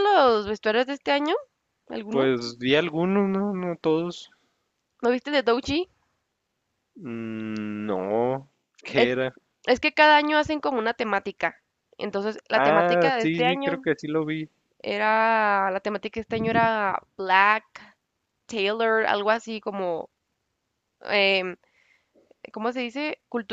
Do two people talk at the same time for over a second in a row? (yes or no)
yes